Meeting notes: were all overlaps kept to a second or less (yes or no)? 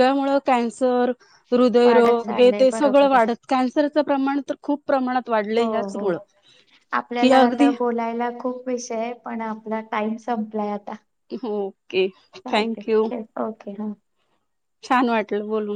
no